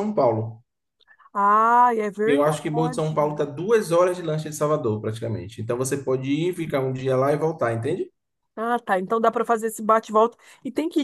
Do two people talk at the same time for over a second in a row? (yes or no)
yes